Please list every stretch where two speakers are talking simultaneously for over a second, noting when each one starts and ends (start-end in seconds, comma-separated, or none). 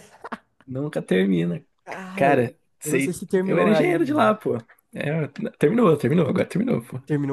2.1-4.3